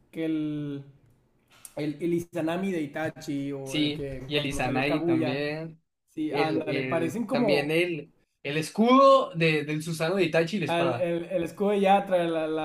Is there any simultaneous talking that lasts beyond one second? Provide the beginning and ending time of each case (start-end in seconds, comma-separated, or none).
3.6-5.5, 6.3-7.8